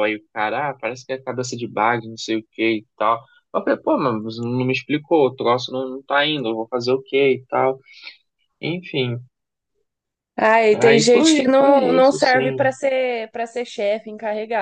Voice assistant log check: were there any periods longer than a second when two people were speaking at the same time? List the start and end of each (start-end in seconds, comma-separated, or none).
10.8-12.7